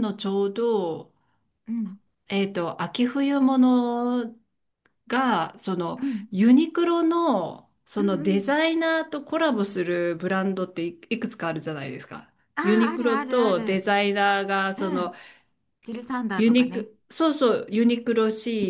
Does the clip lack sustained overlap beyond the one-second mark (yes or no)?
no